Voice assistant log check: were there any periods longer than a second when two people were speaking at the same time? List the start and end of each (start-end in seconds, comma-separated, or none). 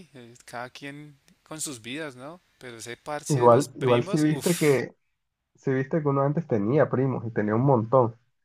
3.3-4.8